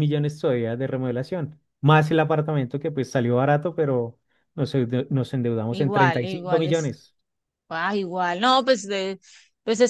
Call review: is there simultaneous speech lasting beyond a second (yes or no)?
yes